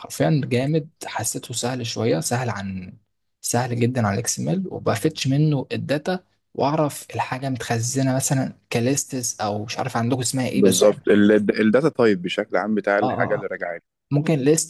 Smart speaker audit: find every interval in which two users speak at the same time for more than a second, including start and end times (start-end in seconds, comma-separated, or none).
none